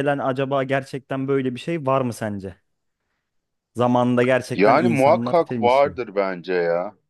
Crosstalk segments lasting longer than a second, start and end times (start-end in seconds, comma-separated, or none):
4.5-6.0